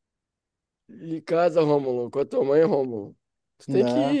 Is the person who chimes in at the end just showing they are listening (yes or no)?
yes